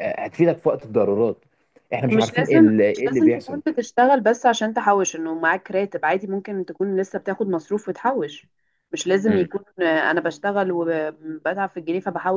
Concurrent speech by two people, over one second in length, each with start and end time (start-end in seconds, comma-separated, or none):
2.1-3.6